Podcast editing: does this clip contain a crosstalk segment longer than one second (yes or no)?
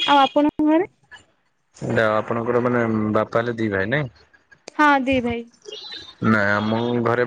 no